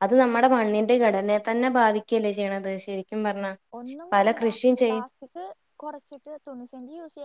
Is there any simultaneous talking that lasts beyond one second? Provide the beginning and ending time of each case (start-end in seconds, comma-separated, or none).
none